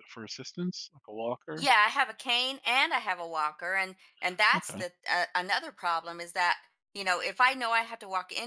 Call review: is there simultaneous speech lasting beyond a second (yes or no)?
no